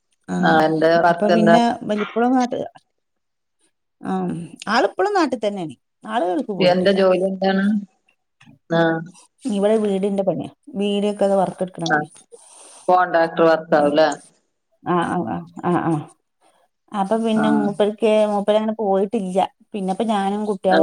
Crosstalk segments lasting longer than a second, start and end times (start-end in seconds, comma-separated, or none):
none